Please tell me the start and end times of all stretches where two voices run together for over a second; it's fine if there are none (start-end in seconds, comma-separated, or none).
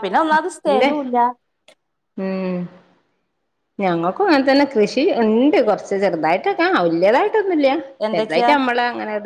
none